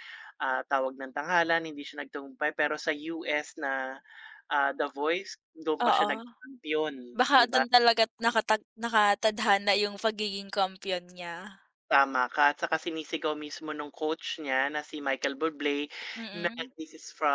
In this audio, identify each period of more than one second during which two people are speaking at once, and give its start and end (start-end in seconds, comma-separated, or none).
none